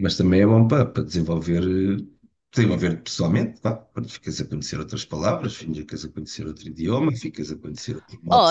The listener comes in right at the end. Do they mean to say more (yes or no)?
yes